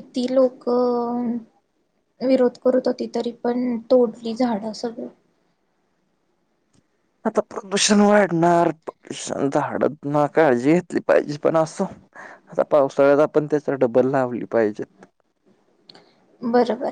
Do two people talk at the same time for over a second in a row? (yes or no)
no